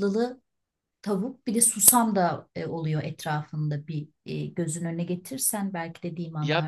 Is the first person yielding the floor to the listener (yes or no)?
yes